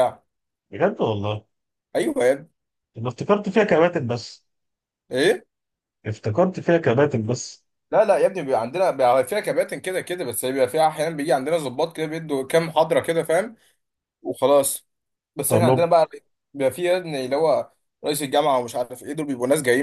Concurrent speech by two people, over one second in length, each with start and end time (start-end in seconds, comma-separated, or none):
none